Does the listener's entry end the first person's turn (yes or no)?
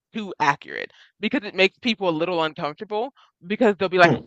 no